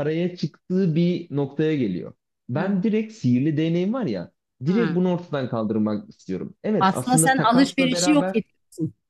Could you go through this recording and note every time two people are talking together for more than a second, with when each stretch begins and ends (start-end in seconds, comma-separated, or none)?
6.8-8.4